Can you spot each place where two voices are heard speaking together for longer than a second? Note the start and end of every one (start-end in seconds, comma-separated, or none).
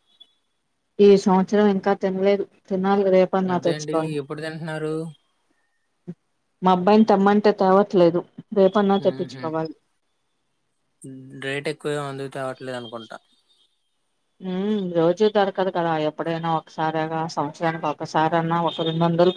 none